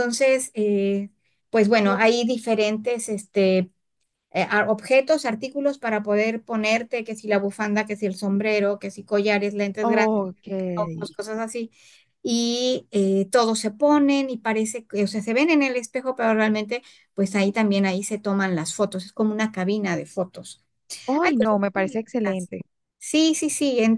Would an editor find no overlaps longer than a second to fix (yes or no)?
no